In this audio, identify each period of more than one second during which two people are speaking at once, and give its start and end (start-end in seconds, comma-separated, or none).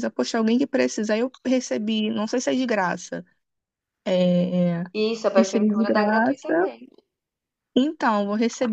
5.3-6.7